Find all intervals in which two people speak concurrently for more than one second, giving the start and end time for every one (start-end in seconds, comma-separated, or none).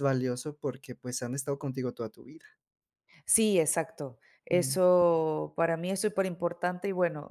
none